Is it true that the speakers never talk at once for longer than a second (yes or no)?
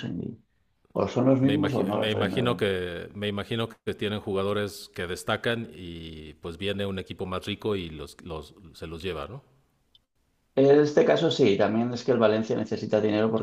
no